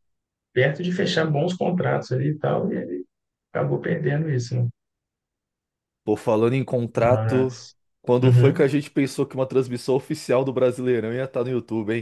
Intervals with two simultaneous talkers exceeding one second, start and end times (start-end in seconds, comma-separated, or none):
none